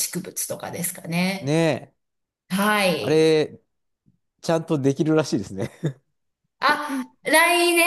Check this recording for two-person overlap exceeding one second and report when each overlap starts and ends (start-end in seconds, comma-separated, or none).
none